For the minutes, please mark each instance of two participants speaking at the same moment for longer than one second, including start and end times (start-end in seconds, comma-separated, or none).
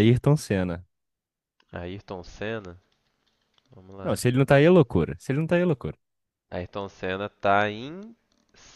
none